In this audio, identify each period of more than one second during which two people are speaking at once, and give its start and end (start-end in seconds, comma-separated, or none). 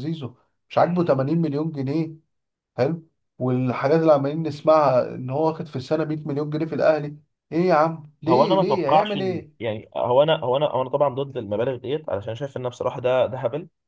8.3-9.6